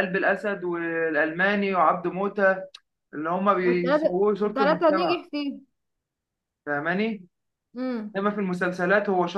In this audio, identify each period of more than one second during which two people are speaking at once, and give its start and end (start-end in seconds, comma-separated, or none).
3.6-5.2